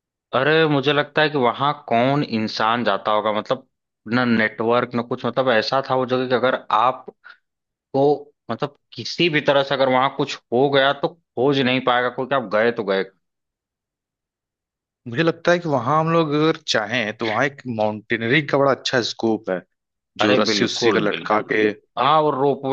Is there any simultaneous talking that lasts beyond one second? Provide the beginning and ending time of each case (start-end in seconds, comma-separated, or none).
20.2-21.5